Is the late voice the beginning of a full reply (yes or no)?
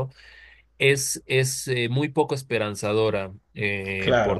yes